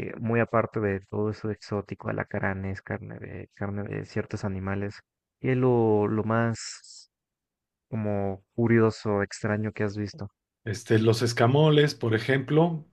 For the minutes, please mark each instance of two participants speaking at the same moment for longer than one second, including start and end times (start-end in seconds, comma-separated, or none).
none